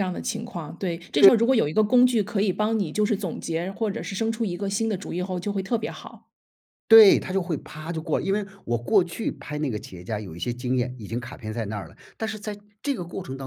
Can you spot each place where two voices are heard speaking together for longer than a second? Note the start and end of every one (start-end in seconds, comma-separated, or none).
none